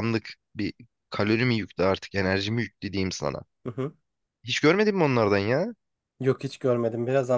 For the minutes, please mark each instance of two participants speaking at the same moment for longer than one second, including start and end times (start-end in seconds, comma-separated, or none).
none